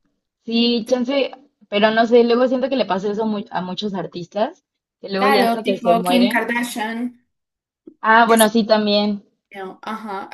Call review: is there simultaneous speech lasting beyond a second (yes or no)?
yes